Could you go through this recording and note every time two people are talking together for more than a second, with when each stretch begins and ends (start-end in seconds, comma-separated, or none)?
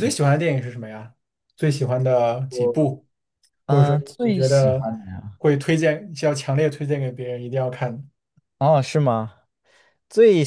3.7-4.9